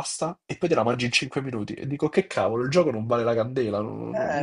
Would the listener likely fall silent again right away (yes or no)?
no